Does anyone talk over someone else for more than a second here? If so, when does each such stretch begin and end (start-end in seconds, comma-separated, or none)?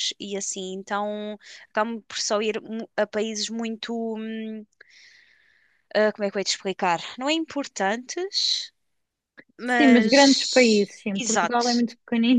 9.6-11.8